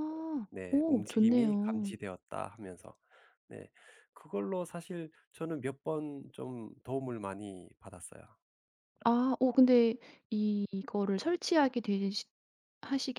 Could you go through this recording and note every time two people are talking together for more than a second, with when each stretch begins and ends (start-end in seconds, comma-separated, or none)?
0.5-1.9